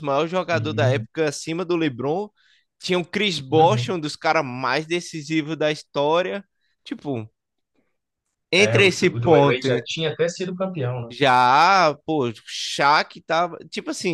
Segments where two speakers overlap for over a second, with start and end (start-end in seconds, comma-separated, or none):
8.6-9.8